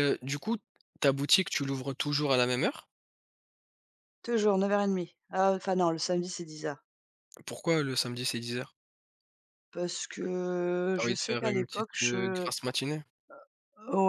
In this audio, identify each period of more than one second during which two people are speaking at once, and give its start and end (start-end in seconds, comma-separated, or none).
10.9-12.5